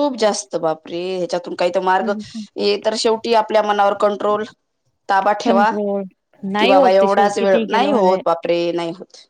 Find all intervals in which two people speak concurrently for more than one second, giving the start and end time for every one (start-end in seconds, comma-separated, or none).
6.6-8.2